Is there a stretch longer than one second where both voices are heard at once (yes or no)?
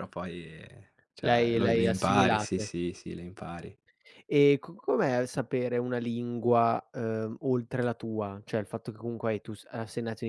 yes